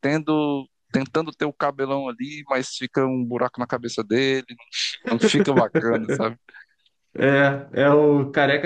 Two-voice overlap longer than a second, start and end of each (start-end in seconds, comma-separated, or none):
none